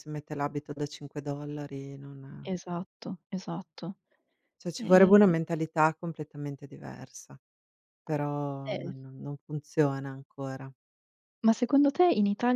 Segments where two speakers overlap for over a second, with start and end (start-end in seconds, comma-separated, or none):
none